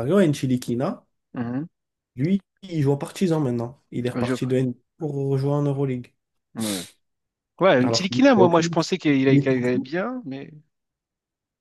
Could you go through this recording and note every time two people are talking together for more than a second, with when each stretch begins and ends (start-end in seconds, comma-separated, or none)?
7.8-9.9